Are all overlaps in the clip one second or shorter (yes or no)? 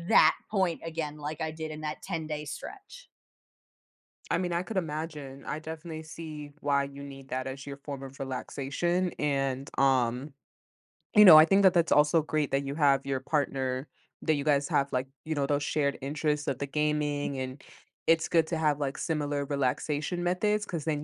yes